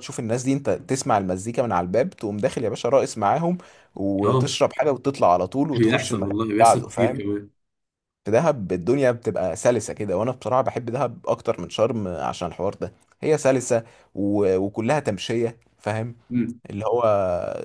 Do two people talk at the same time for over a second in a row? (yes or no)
yes